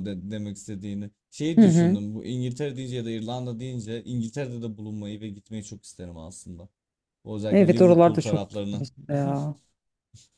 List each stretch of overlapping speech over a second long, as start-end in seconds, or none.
7.5-8.8